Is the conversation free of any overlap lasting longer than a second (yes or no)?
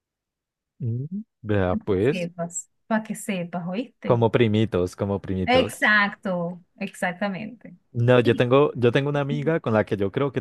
yes